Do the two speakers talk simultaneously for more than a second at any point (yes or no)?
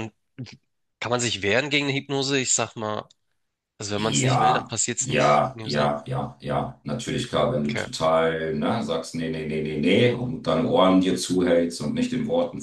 yes